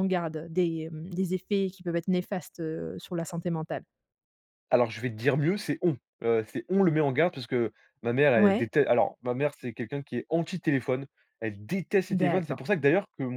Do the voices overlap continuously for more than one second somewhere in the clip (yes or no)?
no